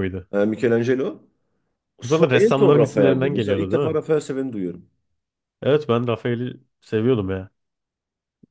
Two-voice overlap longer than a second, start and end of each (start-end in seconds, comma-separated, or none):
2.0-4.0